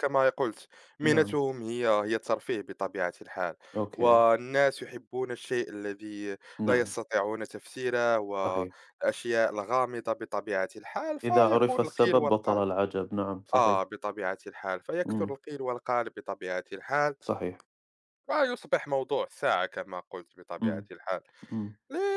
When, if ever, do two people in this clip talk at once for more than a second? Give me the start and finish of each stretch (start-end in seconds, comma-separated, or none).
11.2-12.6